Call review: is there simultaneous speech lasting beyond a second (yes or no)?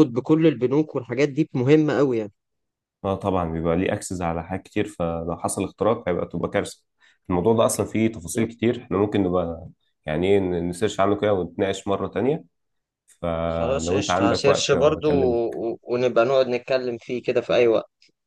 yes